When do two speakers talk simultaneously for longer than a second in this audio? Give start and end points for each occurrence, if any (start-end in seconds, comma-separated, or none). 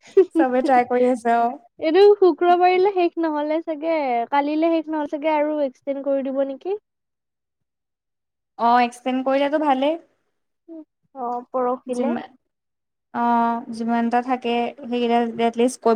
none